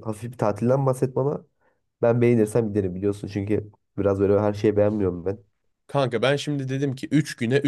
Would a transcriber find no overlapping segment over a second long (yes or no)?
yes